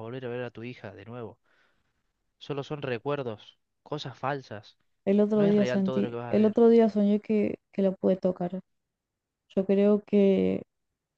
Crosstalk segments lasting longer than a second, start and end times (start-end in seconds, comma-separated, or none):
5.3-6.6